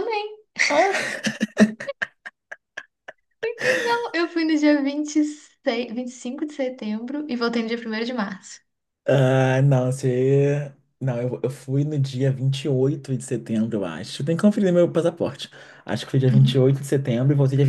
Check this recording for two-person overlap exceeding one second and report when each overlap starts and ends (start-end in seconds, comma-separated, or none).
none